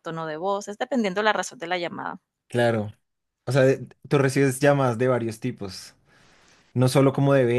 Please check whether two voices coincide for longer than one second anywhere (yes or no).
no